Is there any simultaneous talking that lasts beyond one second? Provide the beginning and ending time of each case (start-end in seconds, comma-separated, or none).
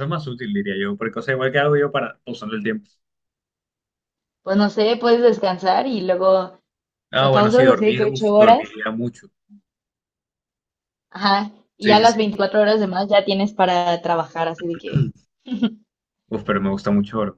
7.1-8.8